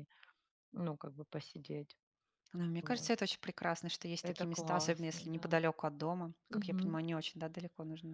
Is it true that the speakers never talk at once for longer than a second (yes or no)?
no